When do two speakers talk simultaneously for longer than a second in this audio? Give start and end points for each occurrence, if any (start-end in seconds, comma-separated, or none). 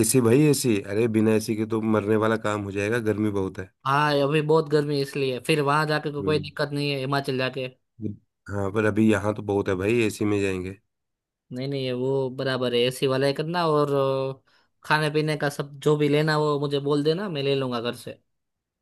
none